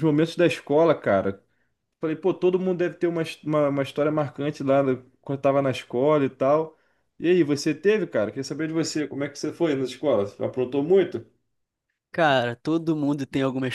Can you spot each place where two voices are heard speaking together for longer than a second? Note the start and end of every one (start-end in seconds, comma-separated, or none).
none